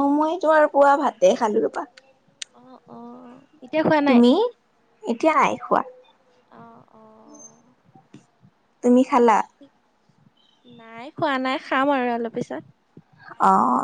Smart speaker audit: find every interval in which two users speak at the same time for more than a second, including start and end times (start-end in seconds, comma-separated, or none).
none